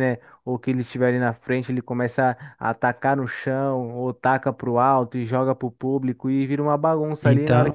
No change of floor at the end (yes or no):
yes